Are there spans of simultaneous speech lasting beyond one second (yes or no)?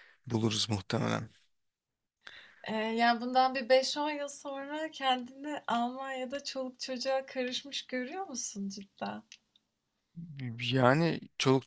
no